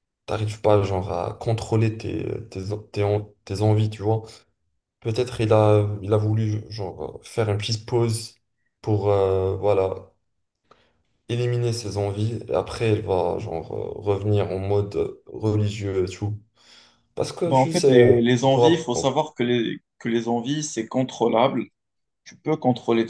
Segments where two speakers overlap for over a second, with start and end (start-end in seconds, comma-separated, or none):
17.4-18.7